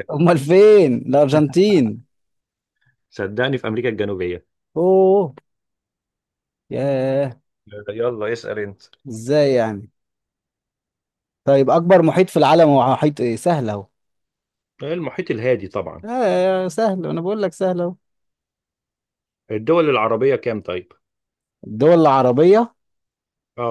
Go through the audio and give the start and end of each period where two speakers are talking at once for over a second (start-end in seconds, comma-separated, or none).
none